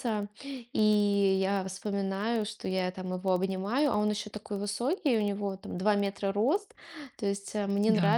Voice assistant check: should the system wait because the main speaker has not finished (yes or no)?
yes